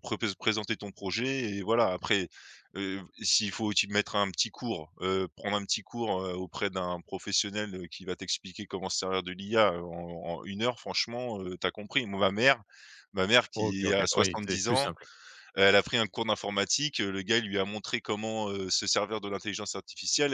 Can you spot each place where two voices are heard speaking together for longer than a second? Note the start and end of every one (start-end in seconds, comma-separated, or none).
13.5-14.9